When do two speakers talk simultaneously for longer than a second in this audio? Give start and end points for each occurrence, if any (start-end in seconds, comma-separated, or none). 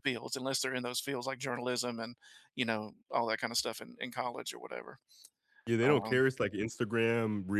none